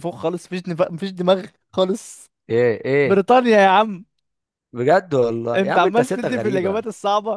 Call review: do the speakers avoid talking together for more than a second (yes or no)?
no